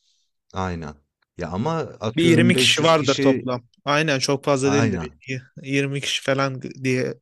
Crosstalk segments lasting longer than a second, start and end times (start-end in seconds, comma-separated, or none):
2.2-3.5